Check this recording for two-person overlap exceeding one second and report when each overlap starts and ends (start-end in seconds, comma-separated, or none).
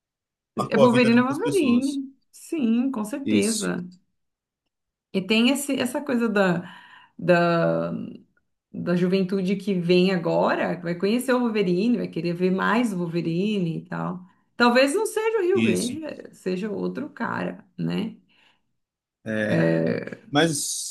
0.7-2.0